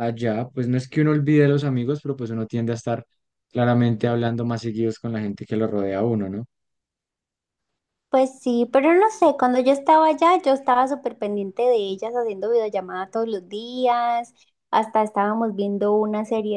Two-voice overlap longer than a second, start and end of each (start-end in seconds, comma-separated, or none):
none